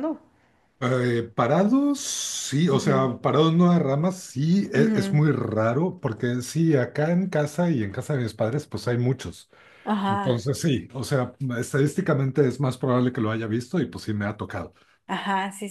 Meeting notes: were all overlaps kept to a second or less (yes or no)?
yes